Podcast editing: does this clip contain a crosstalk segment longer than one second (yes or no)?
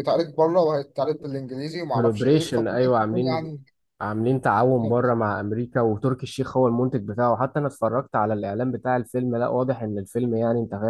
yes